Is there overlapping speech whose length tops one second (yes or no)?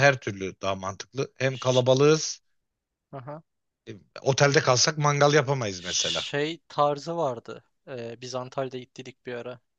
no